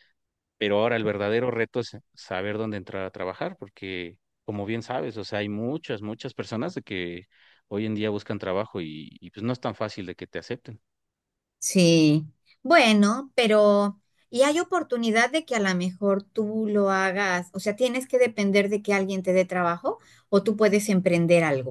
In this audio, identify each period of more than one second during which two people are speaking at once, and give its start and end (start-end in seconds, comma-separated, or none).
none